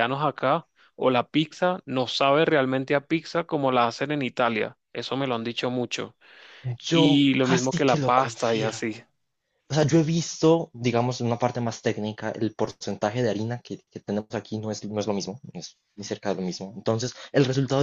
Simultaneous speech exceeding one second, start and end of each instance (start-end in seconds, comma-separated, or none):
6.9-9.0